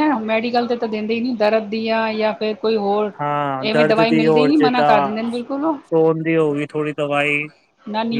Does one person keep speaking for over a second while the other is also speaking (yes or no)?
yes